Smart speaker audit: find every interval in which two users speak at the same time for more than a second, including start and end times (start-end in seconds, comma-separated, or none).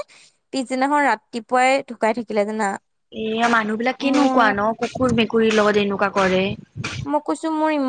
none